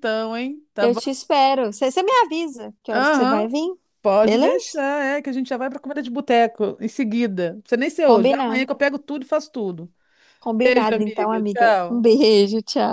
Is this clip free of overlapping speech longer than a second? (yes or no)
no